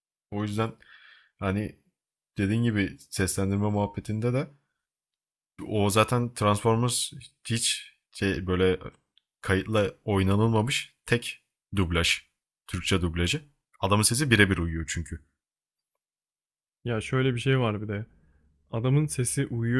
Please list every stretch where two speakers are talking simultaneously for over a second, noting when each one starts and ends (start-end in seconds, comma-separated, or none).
none